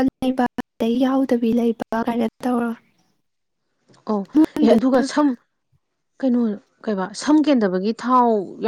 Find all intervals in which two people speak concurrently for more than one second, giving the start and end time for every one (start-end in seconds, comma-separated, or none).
none